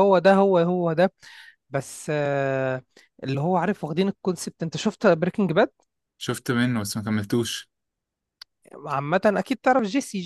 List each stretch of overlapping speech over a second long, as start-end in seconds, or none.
none